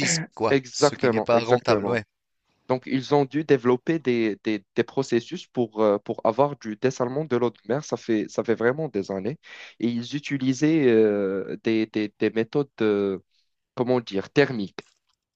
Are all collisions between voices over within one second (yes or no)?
no